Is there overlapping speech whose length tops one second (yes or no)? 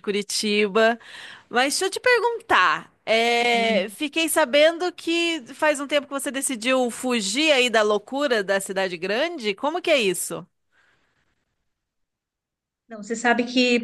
no